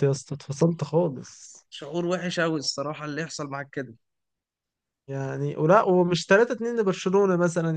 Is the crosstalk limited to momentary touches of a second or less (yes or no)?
yes